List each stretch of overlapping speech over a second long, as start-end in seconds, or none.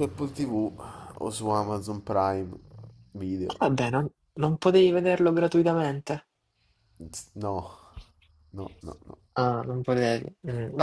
none